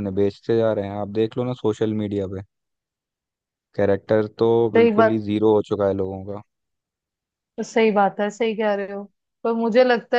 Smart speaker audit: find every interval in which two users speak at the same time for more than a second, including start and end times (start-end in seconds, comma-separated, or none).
none